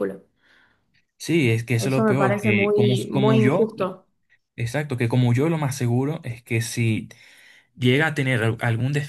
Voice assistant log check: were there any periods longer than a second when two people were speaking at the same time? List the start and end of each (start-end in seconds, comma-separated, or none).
1.8-3.7